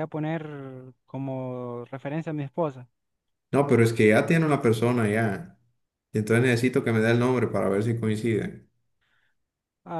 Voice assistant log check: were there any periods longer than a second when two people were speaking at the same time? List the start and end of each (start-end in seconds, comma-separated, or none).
none